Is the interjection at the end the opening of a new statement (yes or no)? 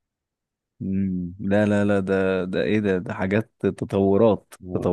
yes